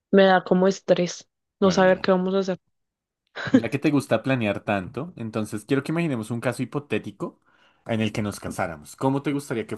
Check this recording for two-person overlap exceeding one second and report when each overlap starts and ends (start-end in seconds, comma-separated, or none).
none